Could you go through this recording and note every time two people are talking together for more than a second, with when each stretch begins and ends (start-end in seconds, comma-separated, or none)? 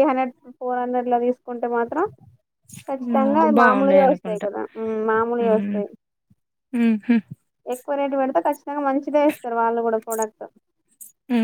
3.0-4.5